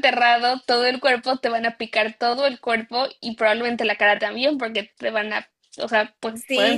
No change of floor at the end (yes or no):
no